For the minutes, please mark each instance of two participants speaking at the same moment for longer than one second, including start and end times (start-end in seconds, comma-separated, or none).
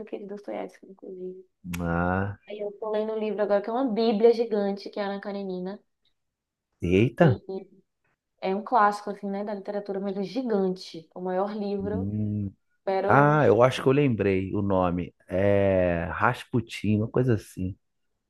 none